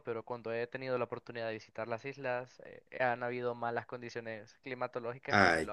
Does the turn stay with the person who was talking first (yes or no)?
no